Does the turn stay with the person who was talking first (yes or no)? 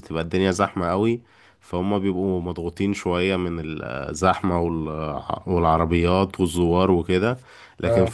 yes